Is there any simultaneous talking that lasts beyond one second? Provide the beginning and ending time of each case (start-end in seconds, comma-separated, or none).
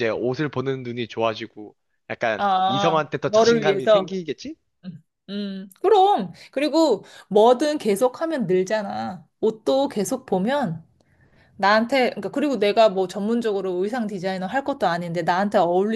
2.4-4.1